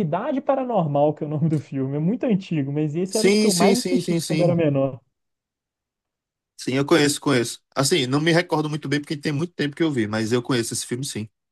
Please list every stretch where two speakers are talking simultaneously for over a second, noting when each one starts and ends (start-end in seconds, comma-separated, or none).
3.0-4.6